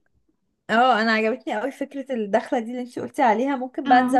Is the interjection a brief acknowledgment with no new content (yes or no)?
yes